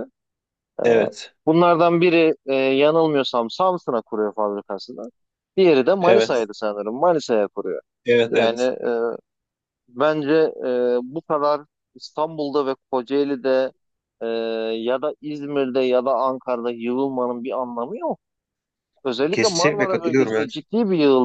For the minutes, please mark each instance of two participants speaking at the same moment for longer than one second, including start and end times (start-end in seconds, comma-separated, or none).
19.3-20.6